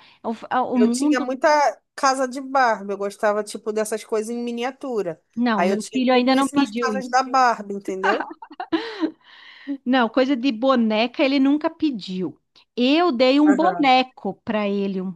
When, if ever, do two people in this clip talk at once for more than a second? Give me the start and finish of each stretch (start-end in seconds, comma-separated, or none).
5.3-7.2